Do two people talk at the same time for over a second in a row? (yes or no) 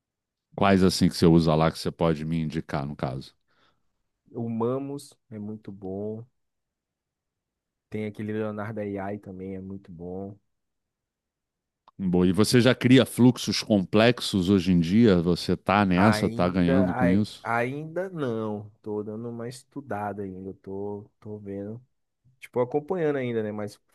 yes